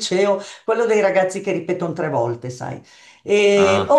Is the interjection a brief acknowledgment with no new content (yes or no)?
yes